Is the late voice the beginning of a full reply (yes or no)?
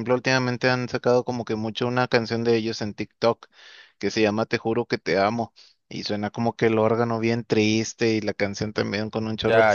yes